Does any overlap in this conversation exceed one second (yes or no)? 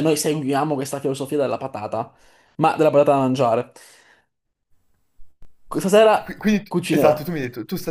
no